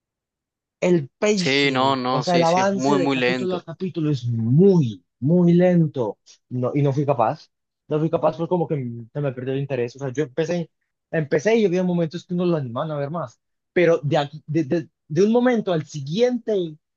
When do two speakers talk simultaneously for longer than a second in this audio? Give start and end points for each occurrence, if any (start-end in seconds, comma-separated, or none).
1.4-3.6